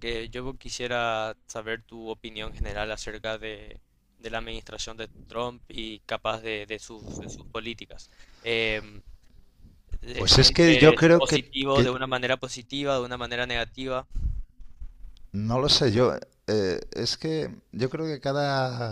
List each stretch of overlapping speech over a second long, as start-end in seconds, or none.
10.2-12.0